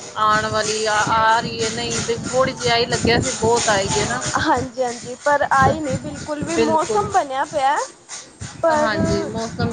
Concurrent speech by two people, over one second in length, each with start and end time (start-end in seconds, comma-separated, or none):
none